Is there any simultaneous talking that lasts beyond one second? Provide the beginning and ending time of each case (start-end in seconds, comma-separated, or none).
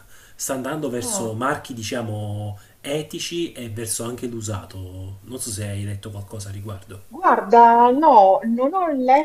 none